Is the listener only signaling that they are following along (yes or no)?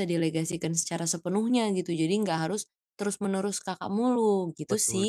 no